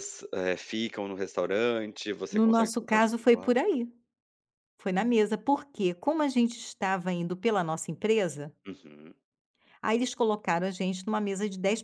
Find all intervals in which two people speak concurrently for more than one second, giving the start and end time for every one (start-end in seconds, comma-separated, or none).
2.3-3.5